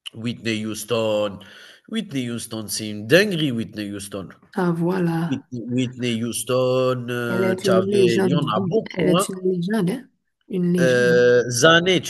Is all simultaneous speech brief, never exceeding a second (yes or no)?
no